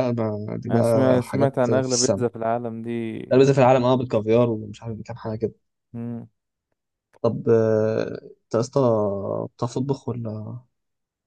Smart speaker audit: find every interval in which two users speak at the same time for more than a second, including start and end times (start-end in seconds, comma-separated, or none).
0.7-2.2